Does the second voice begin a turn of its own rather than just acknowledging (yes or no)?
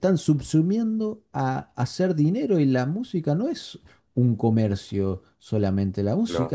no